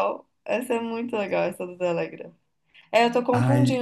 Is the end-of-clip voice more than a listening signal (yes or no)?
no